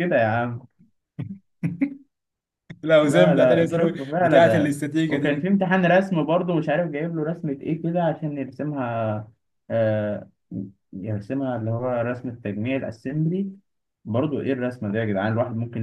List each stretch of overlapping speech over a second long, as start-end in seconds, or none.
3.0-5.5